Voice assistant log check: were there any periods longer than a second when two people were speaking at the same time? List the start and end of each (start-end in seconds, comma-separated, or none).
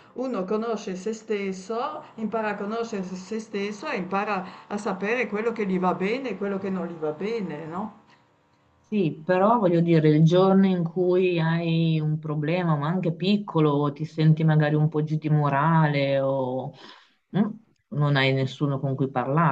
none